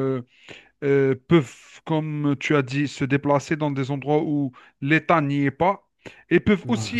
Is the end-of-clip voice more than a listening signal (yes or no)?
no